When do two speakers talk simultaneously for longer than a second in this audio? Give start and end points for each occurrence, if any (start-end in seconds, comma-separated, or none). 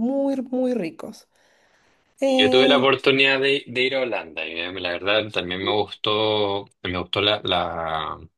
none